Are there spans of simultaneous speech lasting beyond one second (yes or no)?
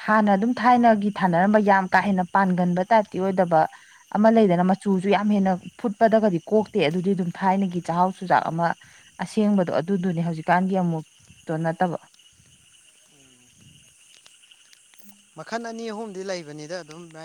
no